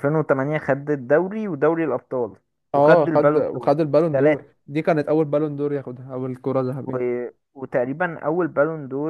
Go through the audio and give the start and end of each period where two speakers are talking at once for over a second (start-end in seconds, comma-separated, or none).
2.7-4.5